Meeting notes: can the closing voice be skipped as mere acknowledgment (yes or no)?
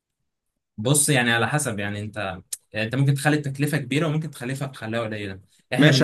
no